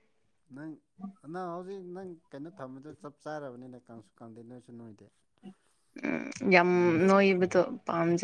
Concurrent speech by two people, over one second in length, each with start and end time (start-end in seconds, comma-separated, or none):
none